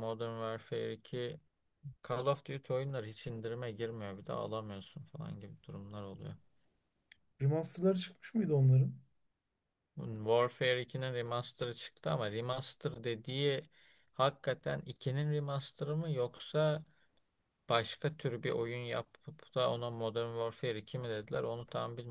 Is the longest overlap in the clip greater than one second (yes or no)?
no